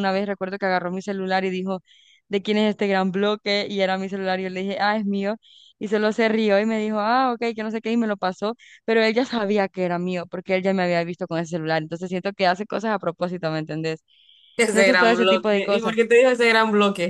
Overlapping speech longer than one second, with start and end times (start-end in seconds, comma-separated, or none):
14.7-15.9